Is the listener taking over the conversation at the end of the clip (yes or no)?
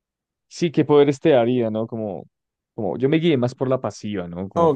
yes